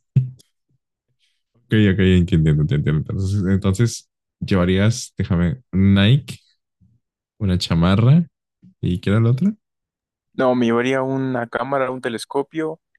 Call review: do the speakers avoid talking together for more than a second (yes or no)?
yes